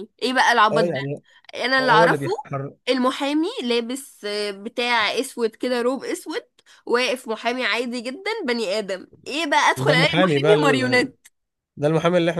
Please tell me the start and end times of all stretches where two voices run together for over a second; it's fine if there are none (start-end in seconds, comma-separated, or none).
9.8-11.1